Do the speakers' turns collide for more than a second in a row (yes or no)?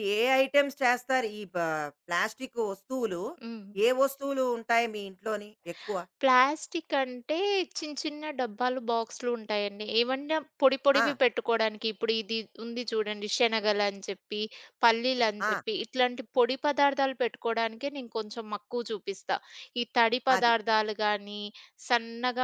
no